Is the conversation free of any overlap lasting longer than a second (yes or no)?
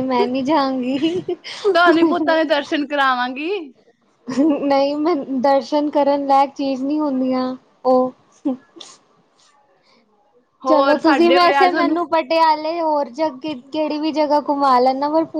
no